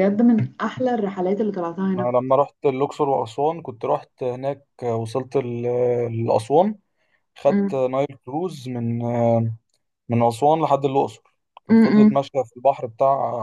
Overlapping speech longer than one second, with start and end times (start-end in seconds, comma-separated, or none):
none